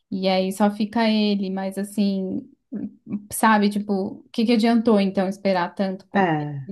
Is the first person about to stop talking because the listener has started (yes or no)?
no